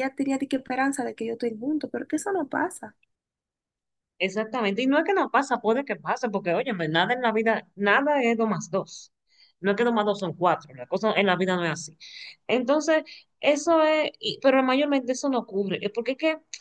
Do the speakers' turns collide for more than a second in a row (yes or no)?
no